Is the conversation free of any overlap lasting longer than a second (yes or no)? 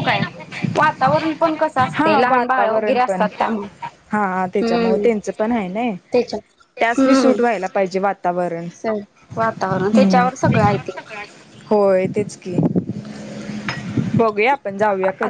no